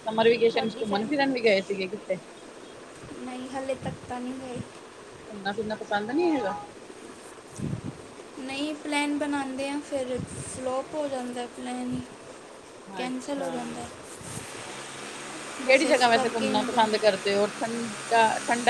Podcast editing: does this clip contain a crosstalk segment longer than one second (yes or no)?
yes